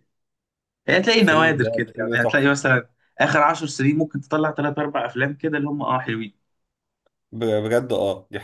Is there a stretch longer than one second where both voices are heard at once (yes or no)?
yes